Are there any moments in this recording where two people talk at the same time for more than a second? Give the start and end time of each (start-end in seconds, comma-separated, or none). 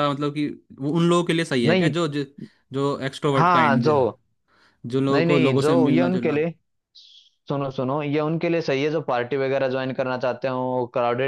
5.1-6.4